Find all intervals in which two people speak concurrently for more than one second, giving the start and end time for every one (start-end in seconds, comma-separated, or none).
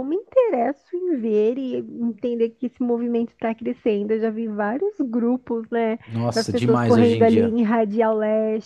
6.3-7.6